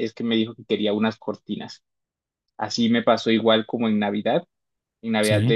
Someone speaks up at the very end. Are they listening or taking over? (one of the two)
listening